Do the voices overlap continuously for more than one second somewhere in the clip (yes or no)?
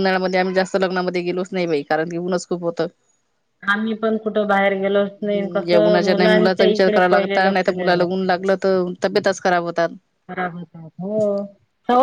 yes